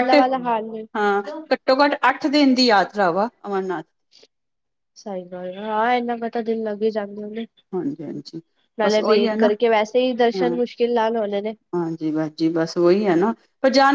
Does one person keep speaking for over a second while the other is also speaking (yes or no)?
no